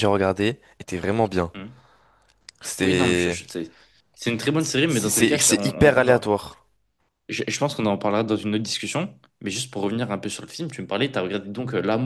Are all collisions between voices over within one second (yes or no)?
no